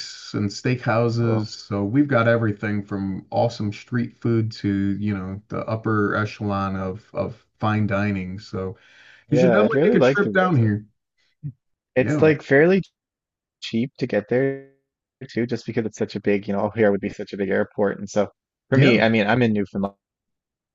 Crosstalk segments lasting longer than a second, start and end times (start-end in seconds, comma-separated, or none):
9.3-10.7